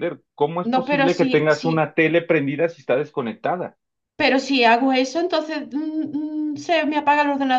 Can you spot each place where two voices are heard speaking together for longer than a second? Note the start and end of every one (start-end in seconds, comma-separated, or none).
0.6-1.9